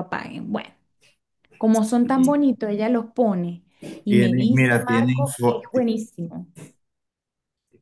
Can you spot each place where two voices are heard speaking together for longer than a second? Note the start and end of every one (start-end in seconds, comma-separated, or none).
4.1-5.9